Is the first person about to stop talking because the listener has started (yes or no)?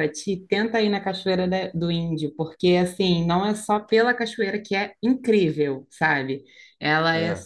no